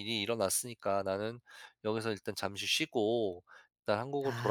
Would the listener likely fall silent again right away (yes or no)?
yes